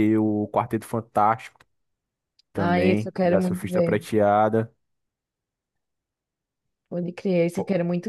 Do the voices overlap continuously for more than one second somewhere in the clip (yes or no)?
yes